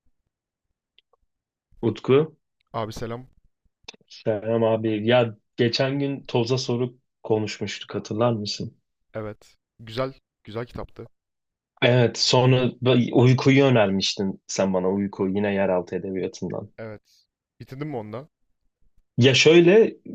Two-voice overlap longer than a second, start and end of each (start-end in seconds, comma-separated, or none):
none